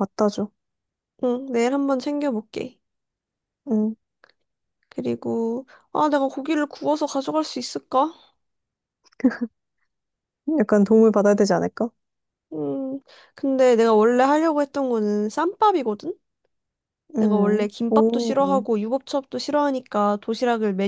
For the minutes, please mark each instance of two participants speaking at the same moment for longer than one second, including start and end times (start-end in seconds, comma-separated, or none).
17.2-18.6